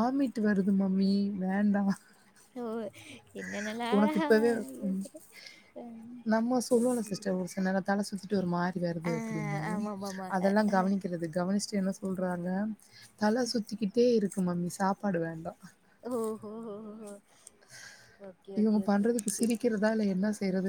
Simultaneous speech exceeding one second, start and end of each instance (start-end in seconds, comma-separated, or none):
none